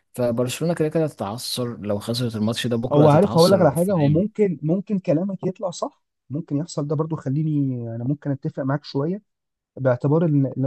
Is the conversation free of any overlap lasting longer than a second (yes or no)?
no